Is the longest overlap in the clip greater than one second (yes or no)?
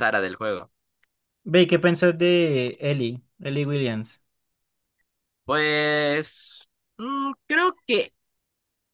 no